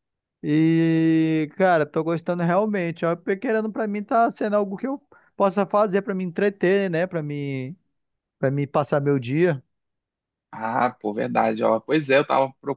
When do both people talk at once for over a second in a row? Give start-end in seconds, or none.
none